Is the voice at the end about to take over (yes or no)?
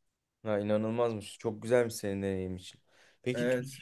no